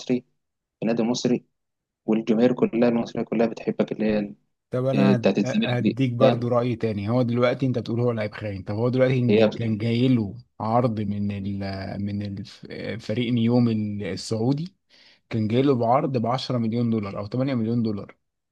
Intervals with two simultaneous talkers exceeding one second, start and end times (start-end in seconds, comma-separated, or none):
4.9-6.5